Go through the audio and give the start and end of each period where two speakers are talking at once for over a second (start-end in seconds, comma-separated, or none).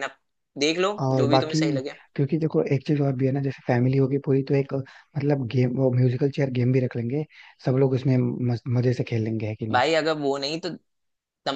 none